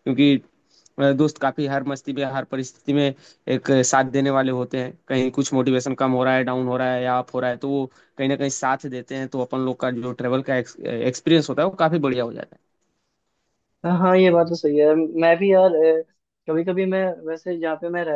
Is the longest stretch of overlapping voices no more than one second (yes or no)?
yes